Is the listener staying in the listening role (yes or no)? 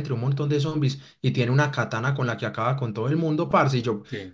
yes